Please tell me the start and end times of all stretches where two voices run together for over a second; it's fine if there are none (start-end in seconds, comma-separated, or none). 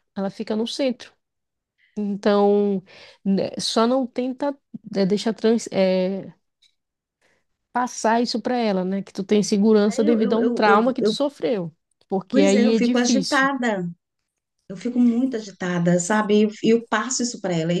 9.9-11.2, 12.3-13.5